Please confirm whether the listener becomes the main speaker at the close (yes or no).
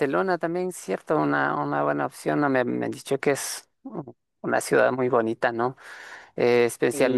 no